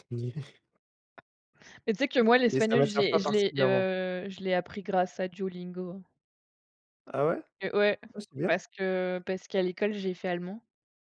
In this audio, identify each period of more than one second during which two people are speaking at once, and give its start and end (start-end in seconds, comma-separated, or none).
2.5-3.9